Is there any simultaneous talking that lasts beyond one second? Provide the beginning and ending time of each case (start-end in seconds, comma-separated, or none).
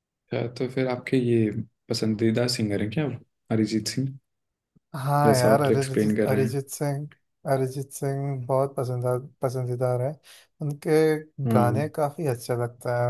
5.3-6.6